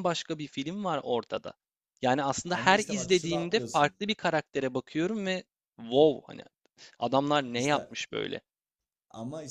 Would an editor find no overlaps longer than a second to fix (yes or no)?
no